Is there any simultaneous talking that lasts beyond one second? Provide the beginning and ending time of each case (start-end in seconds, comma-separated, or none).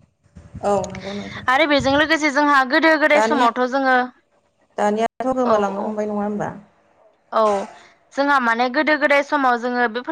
none